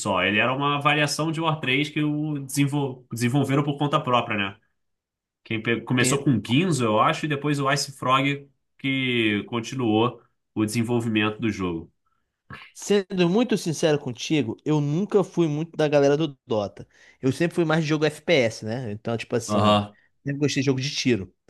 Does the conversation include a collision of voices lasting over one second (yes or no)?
no